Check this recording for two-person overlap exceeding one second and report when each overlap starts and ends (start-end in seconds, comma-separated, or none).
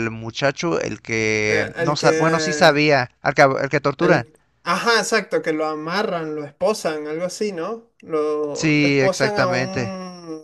1.4-2.8, 8.5-9.9